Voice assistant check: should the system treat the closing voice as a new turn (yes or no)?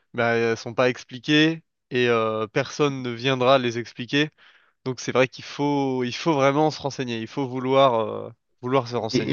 yes